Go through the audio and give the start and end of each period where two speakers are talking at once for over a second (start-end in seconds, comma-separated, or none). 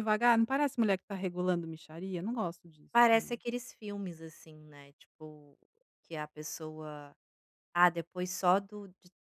none